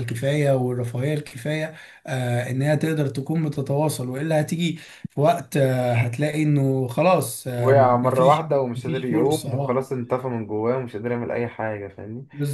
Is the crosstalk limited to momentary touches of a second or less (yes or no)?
no